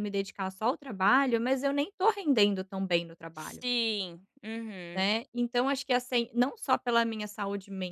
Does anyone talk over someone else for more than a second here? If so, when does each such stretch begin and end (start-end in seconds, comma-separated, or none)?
none